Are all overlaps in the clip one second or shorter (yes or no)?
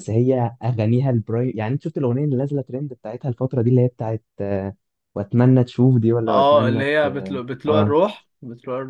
no